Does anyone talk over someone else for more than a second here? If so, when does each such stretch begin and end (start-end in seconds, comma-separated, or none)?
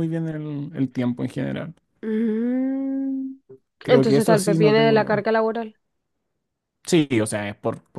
3.9-5.3